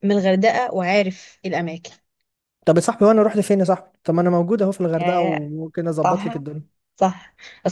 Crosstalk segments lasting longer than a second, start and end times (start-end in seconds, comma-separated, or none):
none